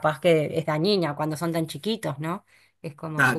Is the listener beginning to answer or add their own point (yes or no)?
yes